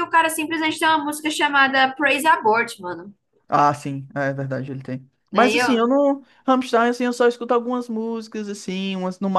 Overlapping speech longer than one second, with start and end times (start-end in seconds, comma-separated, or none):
none